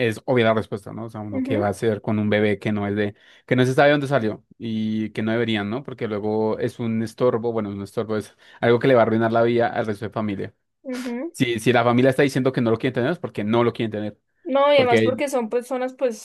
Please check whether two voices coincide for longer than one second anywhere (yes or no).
no